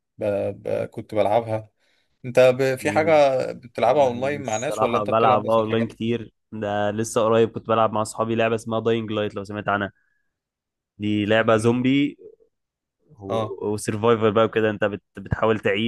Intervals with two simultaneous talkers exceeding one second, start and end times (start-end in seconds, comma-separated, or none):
4.4-6.0